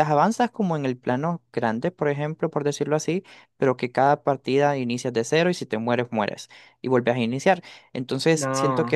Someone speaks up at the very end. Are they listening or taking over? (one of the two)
listening